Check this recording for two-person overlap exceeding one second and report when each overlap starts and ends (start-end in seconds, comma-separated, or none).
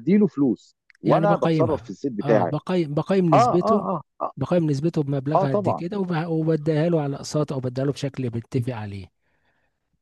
1.0-2.5